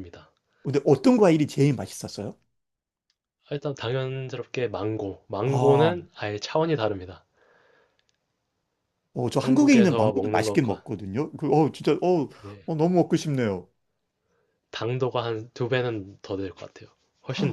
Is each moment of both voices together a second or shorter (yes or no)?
no